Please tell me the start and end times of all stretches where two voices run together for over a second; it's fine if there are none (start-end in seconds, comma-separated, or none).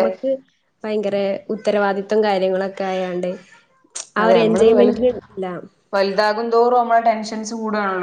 none